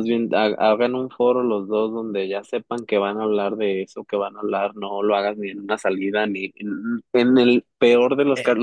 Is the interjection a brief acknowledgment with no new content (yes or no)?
yes